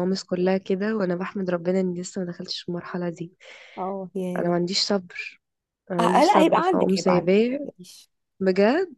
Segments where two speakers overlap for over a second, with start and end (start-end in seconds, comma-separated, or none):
6.0-7.7